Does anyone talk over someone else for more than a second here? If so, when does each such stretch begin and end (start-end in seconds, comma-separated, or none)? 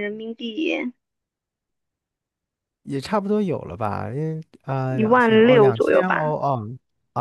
4.9-6.4